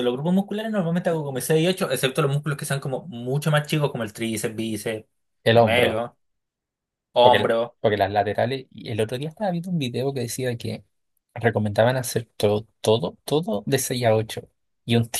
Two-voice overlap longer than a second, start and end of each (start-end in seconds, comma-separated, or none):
none